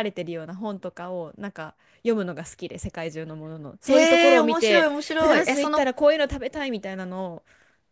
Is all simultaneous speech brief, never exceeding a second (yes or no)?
no